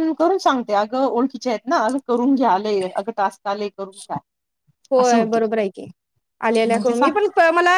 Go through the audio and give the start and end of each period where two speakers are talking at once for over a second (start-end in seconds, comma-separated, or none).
none